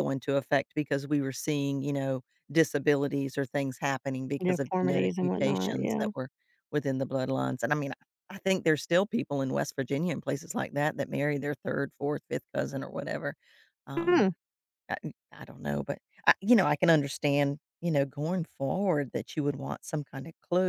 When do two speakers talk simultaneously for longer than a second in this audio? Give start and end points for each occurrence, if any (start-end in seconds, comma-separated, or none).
4.4-6.1